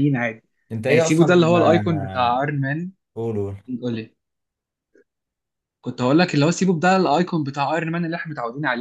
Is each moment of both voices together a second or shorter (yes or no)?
no